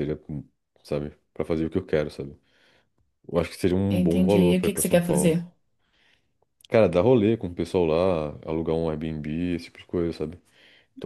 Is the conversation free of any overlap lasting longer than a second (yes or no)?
no